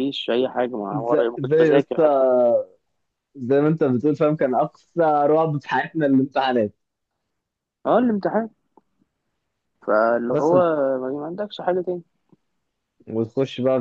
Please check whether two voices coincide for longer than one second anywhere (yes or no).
yes